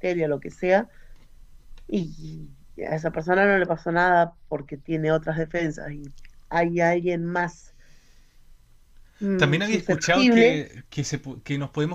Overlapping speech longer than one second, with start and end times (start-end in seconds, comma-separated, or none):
9.4-10.6